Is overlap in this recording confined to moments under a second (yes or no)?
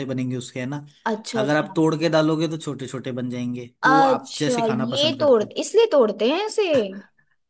no